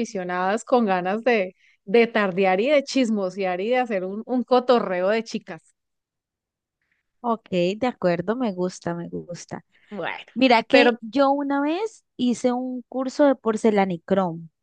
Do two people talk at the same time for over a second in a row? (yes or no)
no